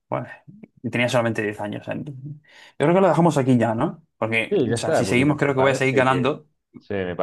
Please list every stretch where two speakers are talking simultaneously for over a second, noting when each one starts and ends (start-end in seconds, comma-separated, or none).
4.5-6.3